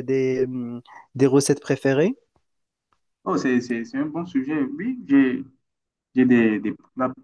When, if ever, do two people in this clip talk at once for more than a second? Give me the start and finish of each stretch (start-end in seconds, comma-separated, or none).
none